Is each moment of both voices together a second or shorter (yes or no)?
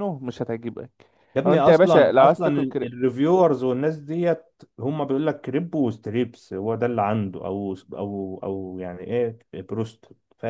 no